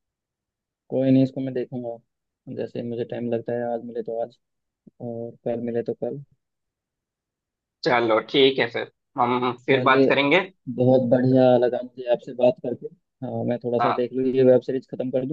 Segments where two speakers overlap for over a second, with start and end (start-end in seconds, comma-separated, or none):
none